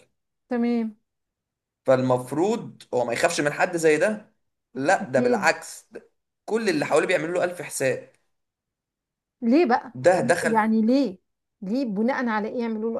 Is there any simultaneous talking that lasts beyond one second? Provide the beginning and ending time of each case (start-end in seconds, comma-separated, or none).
none